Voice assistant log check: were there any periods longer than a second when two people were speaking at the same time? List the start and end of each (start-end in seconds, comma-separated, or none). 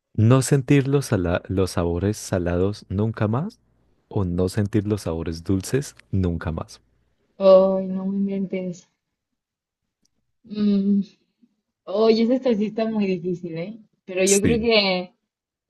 none